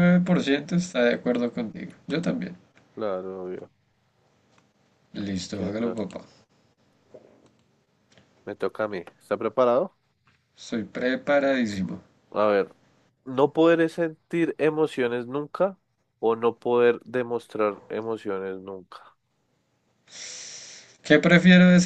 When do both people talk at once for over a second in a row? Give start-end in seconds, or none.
none